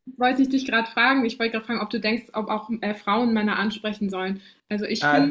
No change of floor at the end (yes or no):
no